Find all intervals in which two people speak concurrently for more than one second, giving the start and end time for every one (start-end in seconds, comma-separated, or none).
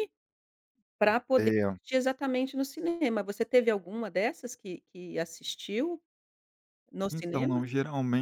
none